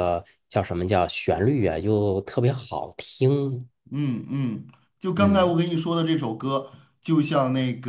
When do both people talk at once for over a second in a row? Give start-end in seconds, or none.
none